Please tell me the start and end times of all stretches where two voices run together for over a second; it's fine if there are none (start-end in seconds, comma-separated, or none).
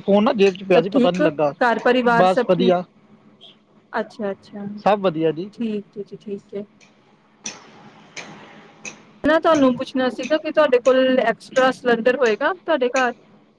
none